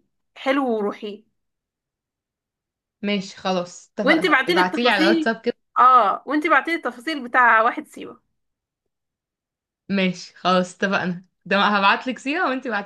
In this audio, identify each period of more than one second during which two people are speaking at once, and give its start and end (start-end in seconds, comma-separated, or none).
4.0-5.4